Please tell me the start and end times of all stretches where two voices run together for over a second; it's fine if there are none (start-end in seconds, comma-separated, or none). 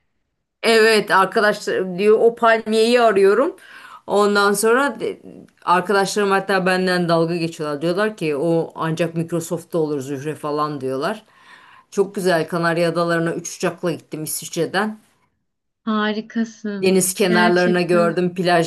16.8-18.1